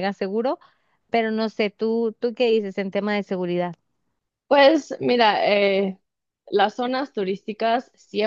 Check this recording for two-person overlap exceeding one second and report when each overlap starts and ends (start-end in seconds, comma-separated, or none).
none